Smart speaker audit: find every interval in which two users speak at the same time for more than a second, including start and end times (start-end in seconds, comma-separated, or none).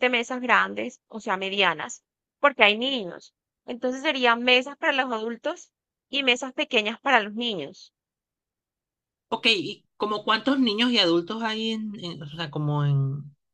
none